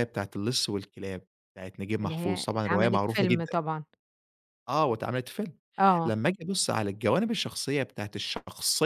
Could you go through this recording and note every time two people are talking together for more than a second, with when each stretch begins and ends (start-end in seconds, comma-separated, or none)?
2.0-3.6